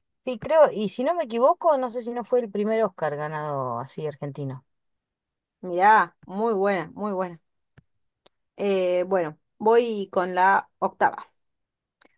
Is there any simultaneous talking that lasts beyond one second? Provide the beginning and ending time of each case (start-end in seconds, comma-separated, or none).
none